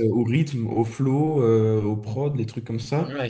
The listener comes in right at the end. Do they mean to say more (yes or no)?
no